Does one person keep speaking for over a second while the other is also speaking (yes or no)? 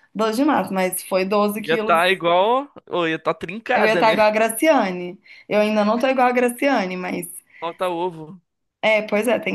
no